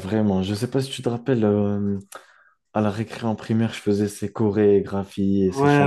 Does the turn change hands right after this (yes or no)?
yes